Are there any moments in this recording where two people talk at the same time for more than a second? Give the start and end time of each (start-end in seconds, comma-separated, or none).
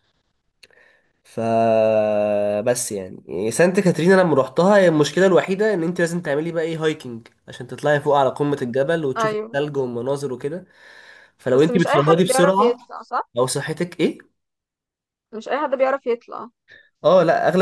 11.5-12.8